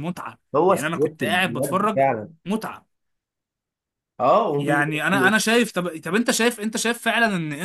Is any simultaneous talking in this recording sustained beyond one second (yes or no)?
yes